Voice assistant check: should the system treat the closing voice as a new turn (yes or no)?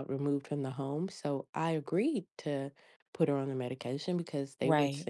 no